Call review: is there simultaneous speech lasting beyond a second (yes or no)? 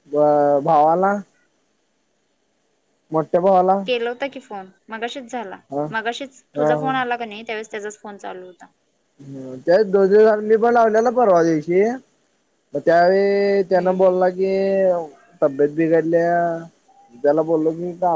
no